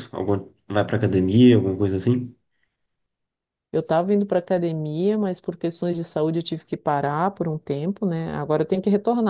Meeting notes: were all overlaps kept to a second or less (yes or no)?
yes